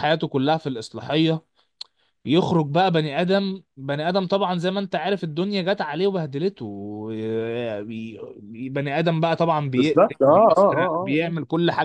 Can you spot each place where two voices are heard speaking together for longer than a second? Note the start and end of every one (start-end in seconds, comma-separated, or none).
9.8-11.3